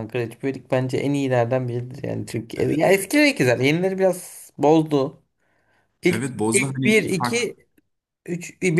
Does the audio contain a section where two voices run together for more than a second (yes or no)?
yes